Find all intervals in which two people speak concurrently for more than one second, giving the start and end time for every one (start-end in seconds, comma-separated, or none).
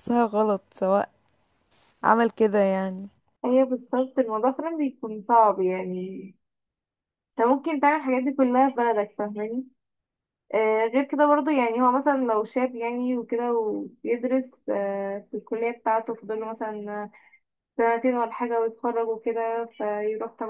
none